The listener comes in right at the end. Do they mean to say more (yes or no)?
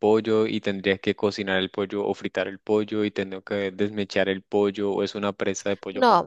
yes